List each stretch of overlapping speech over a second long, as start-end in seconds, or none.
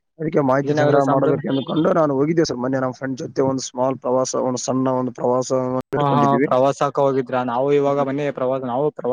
none